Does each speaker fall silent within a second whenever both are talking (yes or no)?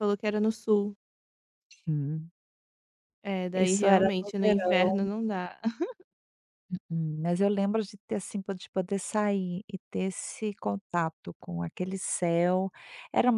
no